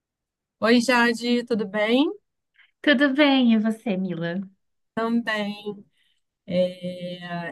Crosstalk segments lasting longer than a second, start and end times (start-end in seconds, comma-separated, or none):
none